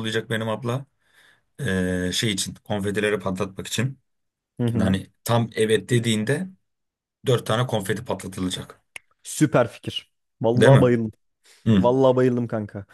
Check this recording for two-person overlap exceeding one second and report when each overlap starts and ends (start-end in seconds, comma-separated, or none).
none